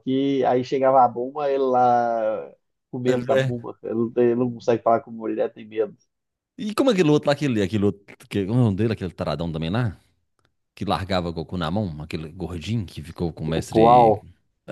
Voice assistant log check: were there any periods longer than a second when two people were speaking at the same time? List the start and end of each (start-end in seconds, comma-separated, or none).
none